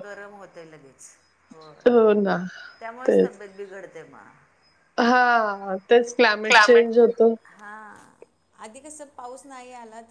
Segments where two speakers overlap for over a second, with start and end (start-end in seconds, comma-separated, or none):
none